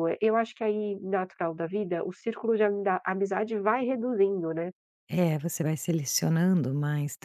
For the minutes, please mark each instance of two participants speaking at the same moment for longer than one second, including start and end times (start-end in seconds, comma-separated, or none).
none